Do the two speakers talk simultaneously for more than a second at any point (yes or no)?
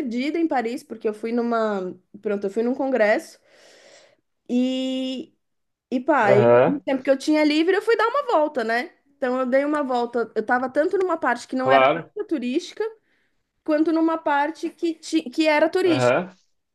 no